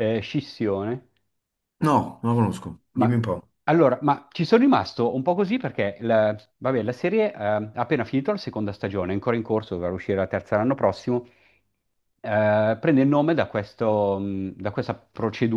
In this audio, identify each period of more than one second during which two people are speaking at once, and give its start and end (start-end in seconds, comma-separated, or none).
none